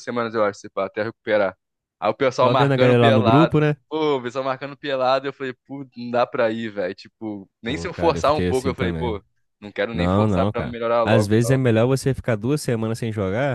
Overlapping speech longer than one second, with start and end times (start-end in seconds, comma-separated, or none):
2.4-3.8, 7.6-9.2, 9.9-11.6